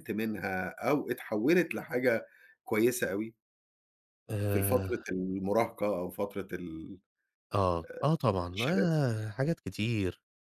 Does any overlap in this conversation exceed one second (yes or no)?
no